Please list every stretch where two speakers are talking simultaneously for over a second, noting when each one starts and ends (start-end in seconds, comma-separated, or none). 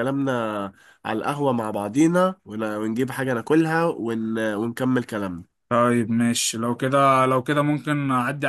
none